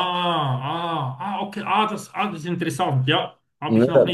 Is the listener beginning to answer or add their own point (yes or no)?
no